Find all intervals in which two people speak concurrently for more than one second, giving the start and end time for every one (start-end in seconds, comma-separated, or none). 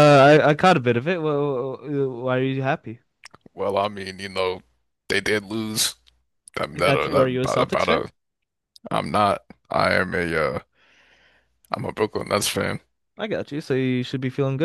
6.7-8.0